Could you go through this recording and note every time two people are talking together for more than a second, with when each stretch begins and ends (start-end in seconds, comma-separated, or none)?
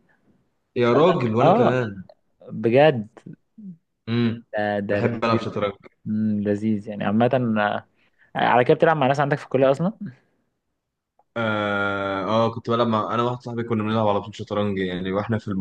none